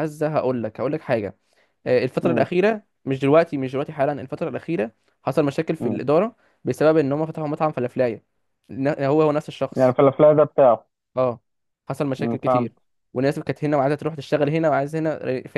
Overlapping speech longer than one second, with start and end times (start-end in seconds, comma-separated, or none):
none